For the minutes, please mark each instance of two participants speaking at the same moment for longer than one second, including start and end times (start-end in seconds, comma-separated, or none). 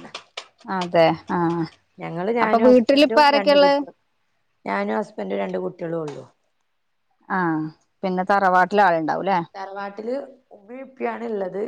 2.4-3.8